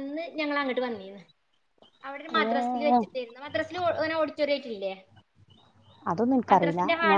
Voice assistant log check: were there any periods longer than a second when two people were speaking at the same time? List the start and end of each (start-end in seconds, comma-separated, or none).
none